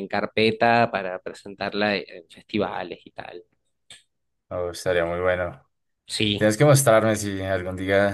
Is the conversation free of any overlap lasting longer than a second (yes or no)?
yes